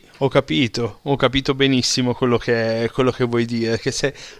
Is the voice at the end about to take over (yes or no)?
no